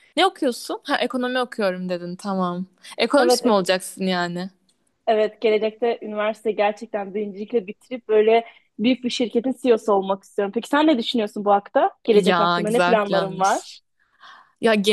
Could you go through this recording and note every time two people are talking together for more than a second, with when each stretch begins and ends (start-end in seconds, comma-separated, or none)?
12.1-13.7